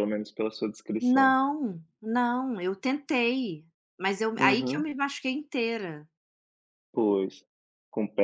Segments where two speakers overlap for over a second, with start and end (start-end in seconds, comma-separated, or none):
none